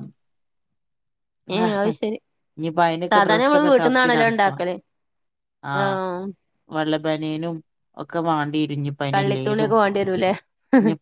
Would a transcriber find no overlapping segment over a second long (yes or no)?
no